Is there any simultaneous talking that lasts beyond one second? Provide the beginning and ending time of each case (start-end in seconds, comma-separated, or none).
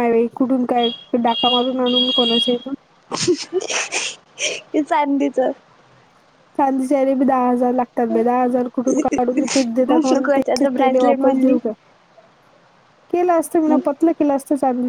9.9-11.6